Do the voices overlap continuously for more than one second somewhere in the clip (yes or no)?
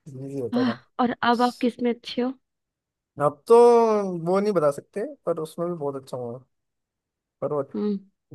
no